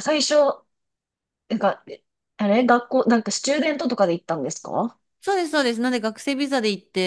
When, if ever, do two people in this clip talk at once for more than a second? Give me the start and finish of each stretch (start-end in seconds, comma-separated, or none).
none